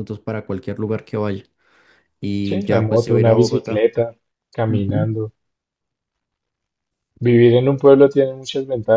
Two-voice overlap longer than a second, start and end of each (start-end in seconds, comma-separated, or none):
2.4-3.9